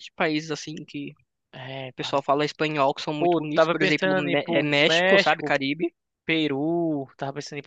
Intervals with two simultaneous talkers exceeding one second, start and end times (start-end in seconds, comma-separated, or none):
3.2-5.5